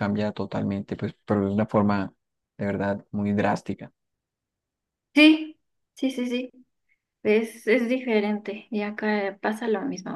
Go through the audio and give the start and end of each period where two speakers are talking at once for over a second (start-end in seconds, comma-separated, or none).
none